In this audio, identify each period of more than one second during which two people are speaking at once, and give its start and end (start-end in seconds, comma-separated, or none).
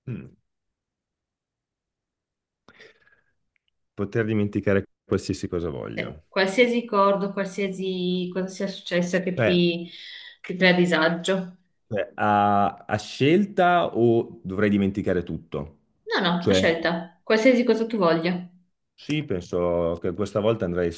none